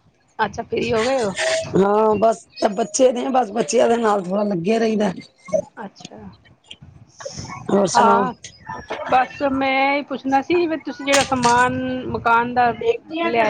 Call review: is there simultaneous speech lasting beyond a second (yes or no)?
no